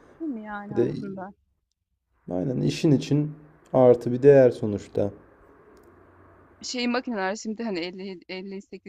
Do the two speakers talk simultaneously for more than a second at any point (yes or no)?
no